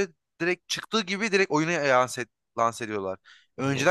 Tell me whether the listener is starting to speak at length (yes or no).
no